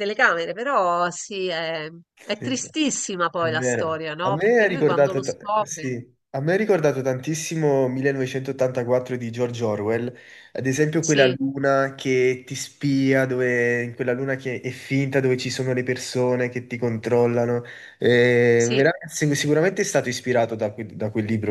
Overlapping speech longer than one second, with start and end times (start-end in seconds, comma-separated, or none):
3.4-6.0